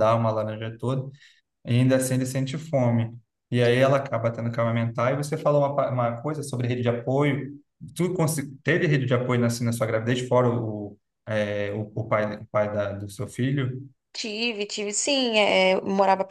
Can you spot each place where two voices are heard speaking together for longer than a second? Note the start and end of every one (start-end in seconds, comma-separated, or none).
none